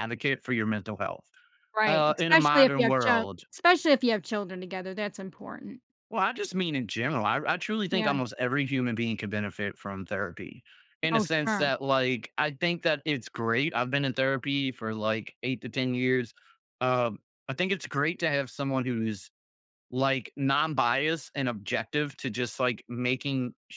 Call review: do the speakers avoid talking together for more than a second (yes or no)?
no